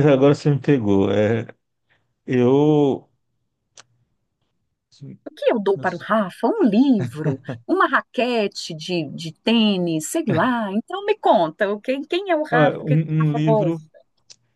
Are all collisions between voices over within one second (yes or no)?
no